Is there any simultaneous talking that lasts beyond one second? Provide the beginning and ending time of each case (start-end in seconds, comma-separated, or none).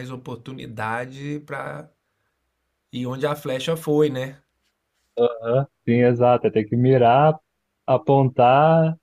none